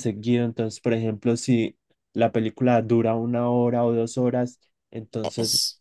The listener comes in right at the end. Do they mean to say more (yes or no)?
no